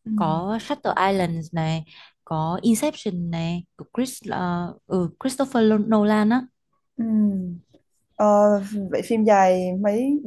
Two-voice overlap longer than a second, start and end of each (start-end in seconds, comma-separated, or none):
none